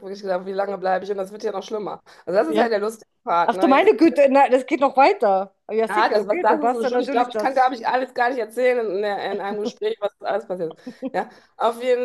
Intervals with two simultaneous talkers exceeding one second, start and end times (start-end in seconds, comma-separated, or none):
5.9-7.8